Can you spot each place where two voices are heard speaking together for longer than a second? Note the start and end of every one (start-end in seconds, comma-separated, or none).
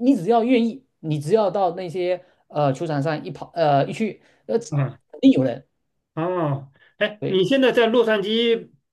none